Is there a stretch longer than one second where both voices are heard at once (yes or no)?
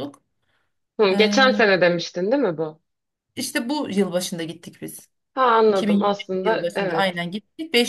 yes